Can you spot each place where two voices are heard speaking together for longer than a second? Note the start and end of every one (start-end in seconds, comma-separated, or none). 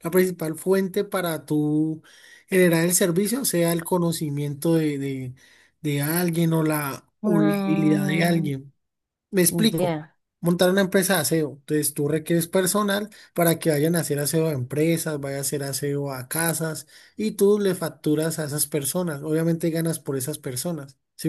7.2-8.5